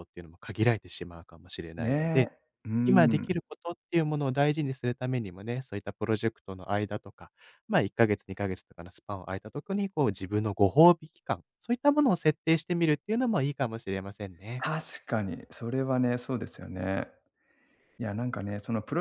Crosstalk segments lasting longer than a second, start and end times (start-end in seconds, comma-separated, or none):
none